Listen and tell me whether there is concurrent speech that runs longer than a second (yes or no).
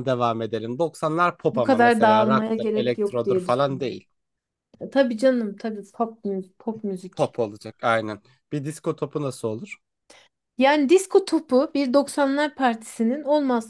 yes